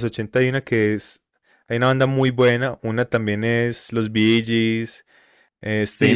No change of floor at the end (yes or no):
yes